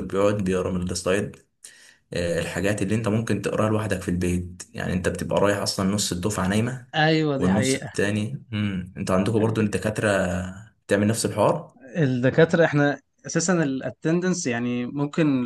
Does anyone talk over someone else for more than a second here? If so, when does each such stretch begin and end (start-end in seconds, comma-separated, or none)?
none